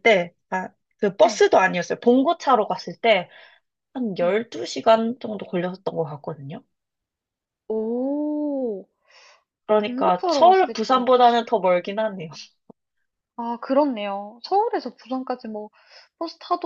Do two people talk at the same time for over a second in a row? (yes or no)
yes